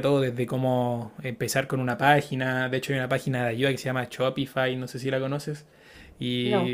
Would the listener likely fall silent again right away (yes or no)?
yes